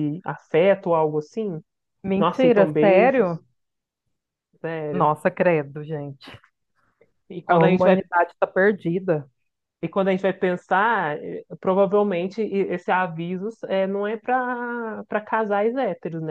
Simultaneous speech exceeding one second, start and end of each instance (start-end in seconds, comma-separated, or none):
2.2-3.4